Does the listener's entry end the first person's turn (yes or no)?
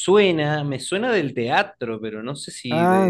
yes